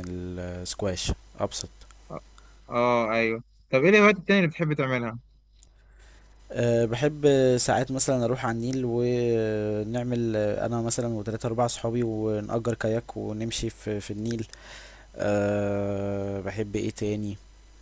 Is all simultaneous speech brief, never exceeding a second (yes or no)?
yes